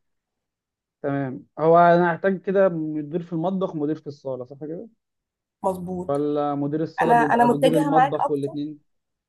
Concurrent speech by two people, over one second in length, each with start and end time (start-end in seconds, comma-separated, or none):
7.0-8.5